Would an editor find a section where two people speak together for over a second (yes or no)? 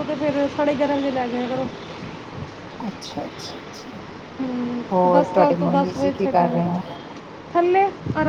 yes